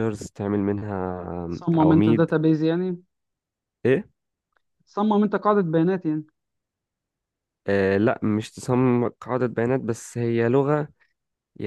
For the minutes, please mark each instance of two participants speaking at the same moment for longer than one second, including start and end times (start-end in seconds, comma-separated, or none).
none